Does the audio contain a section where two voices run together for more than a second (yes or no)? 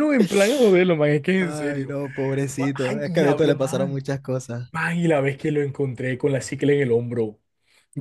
yes